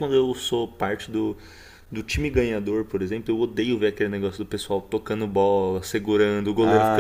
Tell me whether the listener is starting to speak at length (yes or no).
yes